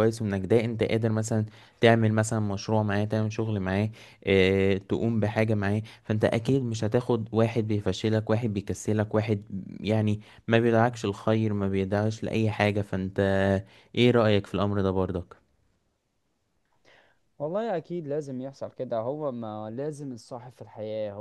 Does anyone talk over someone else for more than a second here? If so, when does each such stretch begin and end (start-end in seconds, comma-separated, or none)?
none